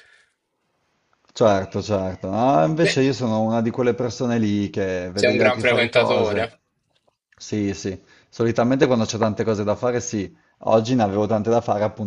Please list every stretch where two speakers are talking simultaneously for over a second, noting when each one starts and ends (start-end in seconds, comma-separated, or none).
5.1-6.5